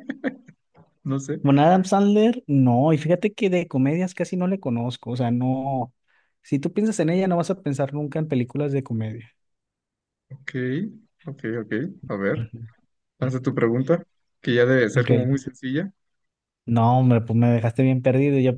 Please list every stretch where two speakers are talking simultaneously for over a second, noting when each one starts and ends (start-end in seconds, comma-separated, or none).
none